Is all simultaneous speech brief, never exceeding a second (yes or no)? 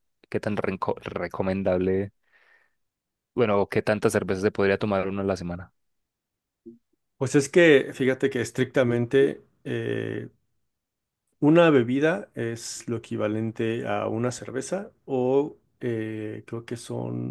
yes